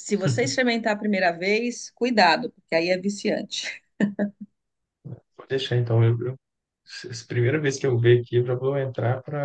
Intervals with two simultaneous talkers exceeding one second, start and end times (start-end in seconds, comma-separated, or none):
none